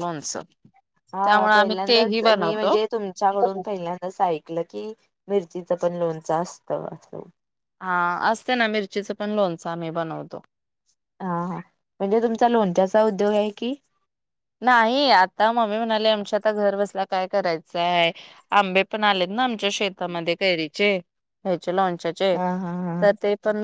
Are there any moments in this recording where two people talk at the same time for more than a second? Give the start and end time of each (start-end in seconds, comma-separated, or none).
1.2-2.8